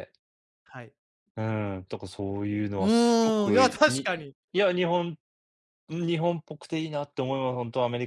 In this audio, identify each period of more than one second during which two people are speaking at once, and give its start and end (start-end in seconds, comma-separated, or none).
2.8-4.1